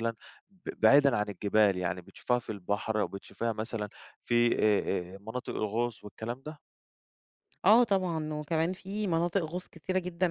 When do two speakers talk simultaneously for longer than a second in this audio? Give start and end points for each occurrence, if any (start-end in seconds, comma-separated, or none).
none